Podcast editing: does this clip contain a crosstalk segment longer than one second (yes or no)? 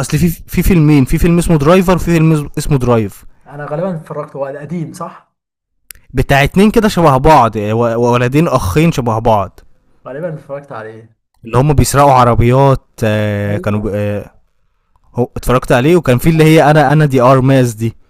no